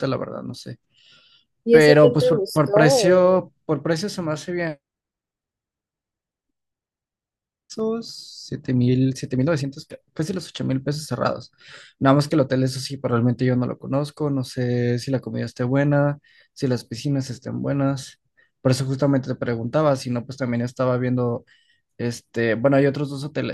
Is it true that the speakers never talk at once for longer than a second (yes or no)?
no